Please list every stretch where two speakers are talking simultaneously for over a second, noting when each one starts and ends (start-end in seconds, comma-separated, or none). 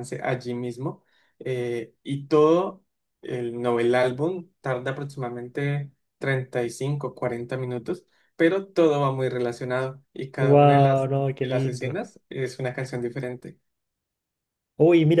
10.4-12.0